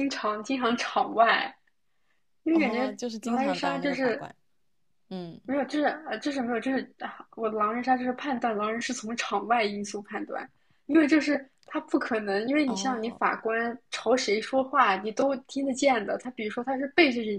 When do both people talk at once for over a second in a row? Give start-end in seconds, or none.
2.5-4.3